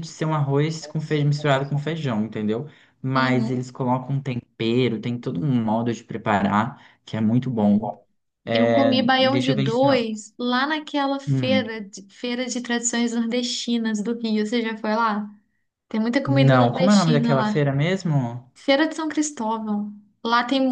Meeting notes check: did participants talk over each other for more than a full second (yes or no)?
yes